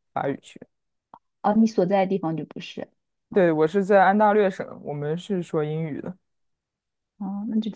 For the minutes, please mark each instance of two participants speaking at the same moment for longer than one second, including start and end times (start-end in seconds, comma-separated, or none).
none